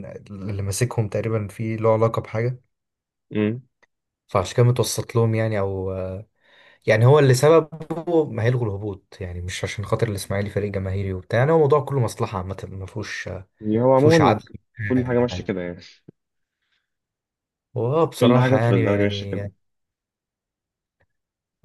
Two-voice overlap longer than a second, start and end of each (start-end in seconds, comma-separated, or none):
18.2-19.5